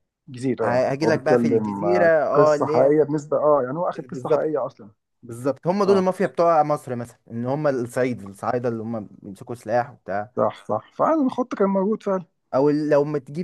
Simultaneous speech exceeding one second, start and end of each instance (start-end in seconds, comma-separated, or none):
0.6-2.9